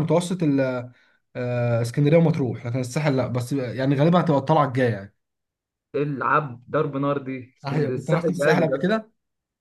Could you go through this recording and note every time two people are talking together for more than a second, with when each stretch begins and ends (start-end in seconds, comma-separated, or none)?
7.7-8.9